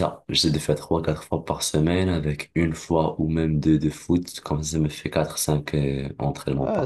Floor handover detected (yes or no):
yes